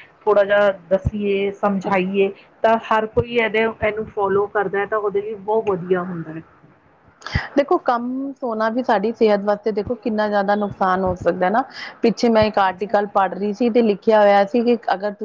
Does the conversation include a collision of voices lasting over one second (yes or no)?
no